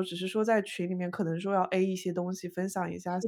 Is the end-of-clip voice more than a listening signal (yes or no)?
no